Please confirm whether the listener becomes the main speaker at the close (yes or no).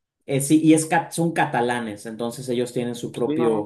no